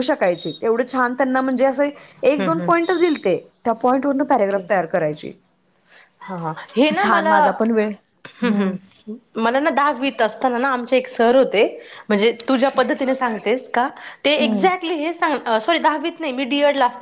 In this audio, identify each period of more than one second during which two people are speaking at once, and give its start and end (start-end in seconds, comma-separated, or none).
none